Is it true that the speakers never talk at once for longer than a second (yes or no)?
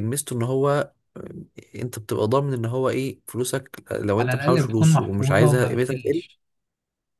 no